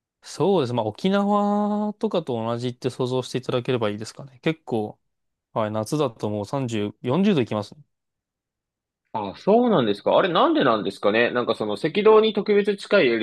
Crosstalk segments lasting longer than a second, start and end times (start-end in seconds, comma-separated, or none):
none